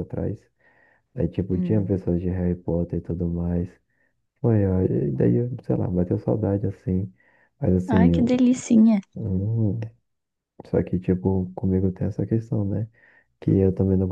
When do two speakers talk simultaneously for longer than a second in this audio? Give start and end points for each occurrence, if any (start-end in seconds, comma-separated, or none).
none